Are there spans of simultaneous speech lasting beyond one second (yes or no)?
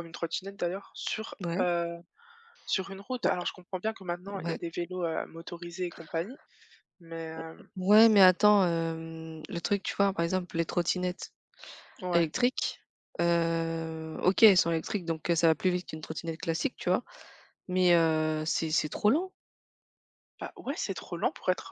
no